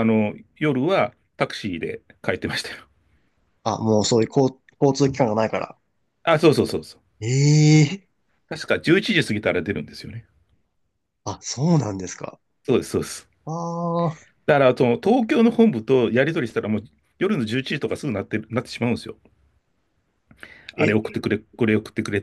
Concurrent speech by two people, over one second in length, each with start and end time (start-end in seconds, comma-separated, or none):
none